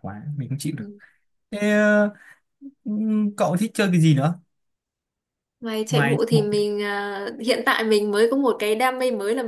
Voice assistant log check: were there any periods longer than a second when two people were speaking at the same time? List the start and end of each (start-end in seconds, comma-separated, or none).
none